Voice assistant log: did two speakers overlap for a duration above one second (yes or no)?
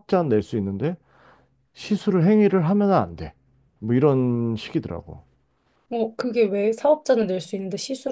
no